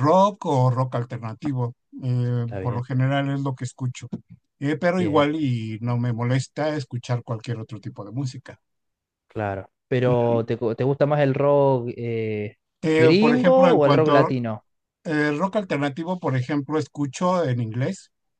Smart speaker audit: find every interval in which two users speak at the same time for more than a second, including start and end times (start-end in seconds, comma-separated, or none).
13.0-14.3